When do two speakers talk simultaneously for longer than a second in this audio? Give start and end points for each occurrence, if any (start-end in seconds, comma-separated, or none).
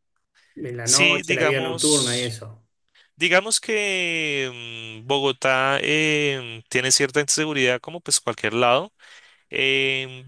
0.8-2.4